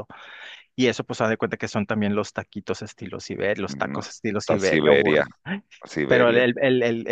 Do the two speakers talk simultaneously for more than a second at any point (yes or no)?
yes